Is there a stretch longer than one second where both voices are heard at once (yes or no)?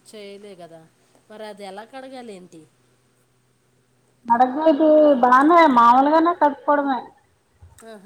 no